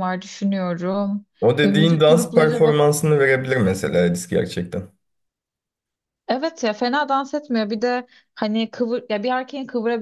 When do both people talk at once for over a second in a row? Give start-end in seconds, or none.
1.6-2.8